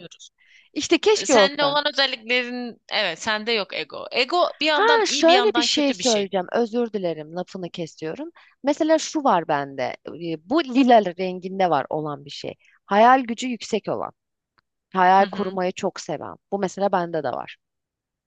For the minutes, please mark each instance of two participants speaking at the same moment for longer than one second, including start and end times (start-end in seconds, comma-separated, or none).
4.7-6.3